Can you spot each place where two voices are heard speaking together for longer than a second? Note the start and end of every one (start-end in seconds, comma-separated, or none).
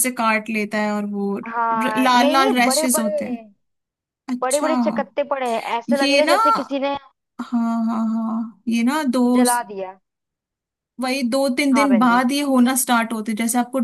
1.5-3.4